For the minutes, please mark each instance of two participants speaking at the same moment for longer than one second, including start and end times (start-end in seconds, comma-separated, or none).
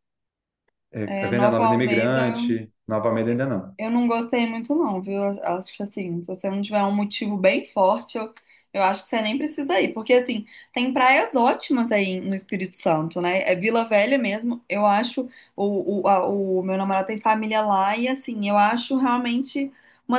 1.1-2.7